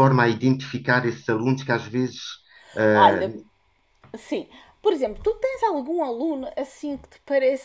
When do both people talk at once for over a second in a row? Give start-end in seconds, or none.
none